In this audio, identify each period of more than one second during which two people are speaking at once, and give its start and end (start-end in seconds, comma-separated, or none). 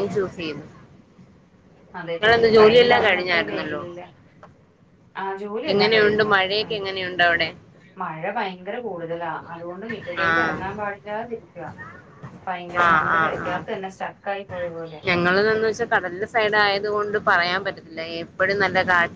none